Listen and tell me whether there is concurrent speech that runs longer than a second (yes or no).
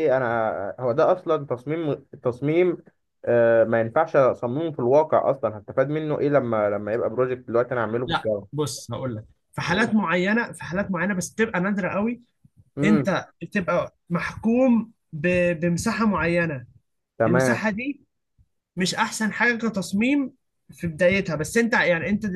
no